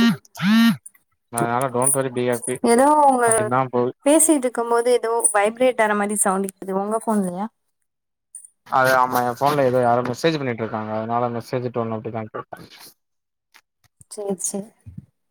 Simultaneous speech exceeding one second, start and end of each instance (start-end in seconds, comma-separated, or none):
none